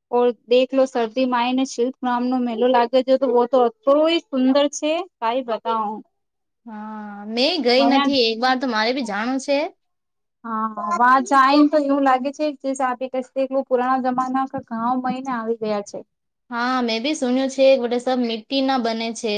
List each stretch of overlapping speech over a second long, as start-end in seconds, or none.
none